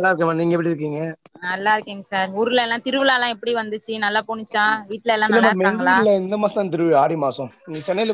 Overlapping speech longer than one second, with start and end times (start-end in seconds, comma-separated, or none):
none